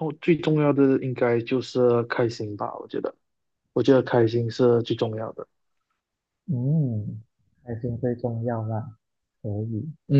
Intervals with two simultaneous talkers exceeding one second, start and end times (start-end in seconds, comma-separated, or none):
none